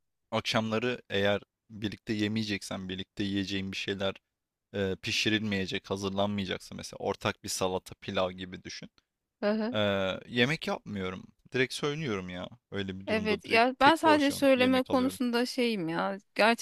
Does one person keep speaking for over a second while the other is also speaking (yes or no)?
yes